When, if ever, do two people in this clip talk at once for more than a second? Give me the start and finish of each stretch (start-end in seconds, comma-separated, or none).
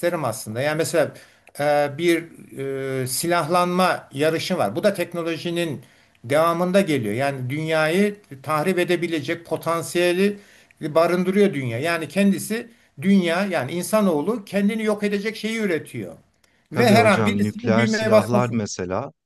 16.7-18.6